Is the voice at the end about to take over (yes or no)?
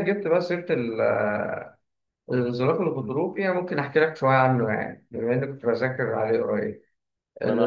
yes